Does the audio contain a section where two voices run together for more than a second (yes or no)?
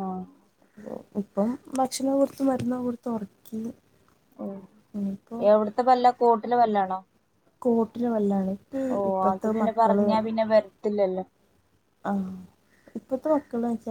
no